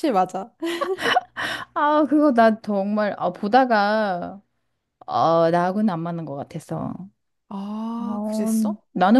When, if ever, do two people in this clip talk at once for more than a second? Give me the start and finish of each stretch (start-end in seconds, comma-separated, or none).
none